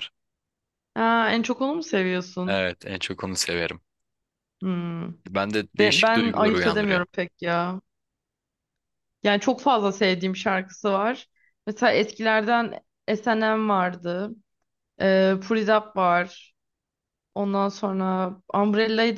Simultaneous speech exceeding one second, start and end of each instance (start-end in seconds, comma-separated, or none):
5.8-7.0